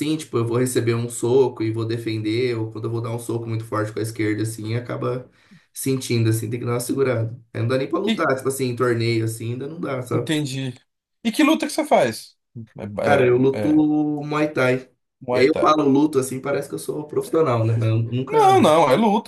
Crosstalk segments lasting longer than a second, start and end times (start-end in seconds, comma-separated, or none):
none